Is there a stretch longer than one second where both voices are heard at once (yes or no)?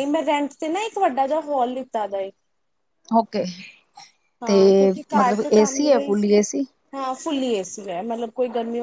yes